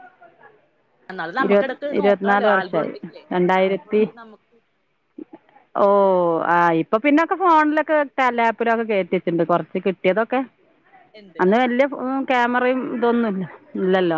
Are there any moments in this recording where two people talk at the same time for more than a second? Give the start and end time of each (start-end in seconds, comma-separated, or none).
1.5-2.9